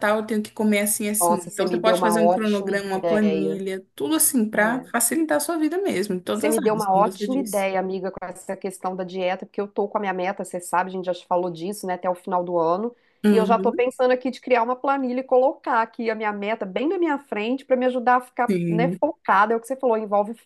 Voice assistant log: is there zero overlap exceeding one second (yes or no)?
no